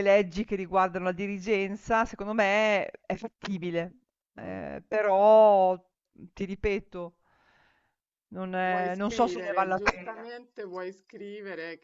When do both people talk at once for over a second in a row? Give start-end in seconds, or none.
8.6-10.3